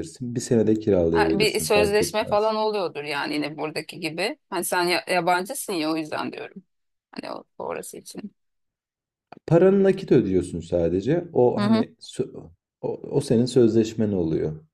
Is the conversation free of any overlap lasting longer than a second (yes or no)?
no